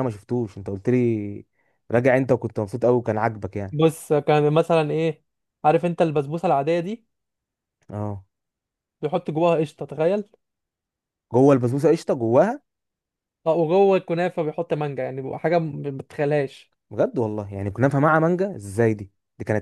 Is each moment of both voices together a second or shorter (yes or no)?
yes